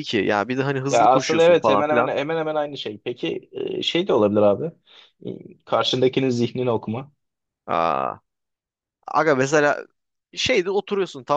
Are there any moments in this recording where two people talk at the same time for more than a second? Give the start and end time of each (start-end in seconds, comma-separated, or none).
0.9-2.1